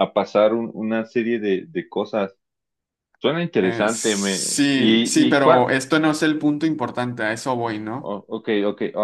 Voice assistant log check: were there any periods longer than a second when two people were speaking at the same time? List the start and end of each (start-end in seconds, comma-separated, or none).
3.6-5.7